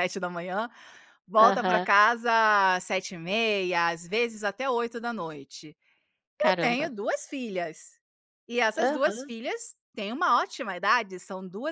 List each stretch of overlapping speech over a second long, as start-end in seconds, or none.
none